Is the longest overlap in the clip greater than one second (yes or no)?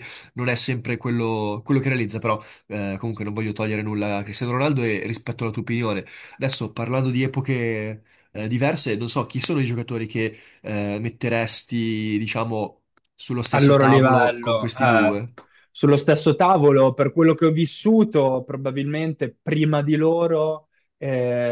yes